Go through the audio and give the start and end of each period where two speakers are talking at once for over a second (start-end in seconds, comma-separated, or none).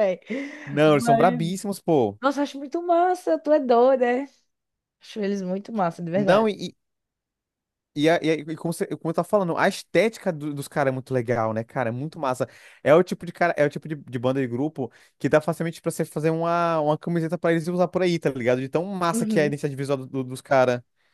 none